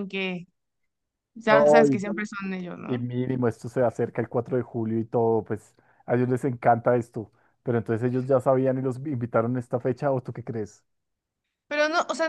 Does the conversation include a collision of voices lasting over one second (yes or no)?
no